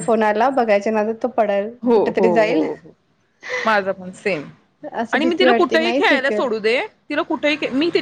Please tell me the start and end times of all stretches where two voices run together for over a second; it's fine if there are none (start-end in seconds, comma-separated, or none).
5.1-6.4